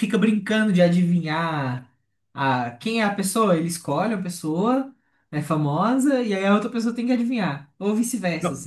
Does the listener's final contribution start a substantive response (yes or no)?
yes